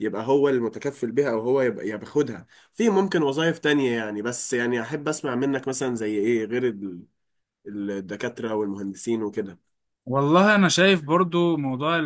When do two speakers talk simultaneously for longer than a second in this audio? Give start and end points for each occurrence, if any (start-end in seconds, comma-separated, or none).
none